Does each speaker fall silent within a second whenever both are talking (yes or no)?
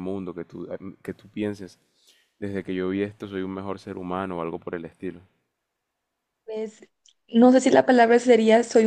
yes